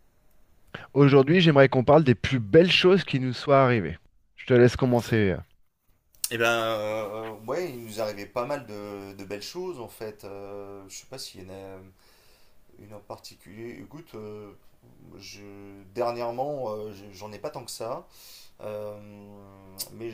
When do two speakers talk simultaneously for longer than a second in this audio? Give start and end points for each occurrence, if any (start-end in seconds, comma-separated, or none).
none